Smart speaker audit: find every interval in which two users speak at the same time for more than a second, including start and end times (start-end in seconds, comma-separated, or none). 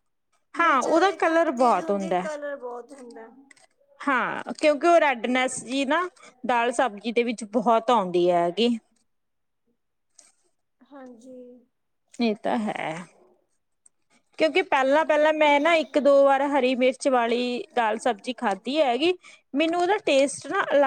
0.6-2.3